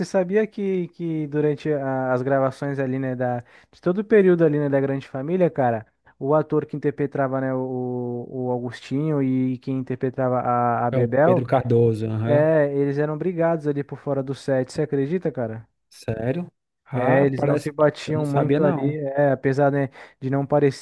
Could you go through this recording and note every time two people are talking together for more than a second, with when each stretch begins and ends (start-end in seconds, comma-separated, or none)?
16.9-19.0